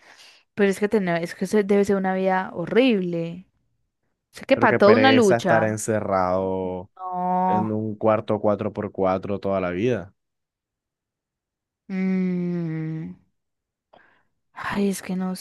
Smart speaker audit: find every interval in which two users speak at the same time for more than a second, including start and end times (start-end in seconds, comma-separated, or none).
4.5-5.8